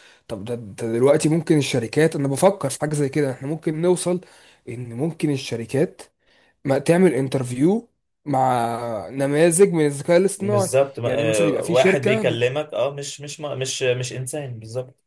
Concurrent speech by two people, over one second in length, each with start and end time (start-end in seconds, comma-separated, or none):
10.4-12.5